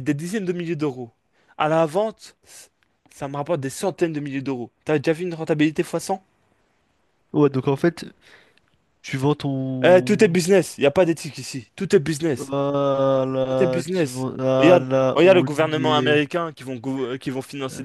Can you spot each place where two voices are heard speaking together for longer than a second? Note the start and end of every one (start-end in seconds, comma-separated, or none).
13.5-16.2